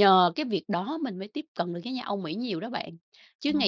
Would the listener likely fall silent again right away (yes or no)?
yes